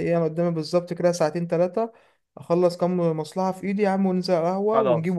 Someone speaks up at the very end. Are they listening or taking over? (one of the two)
listening